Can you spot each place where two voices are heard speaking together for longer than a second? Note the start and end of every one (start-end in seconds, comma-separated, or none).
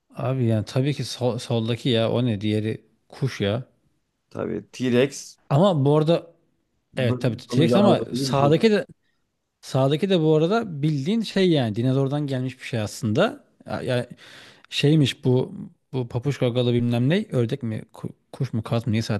7.0-8.5